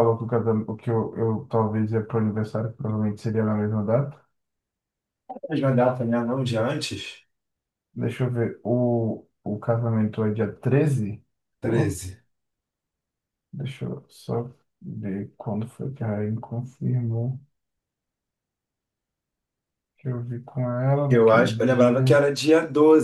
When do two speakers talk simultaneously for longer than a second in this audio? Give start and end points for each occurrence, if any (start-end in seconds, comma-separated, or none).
21.1-22.3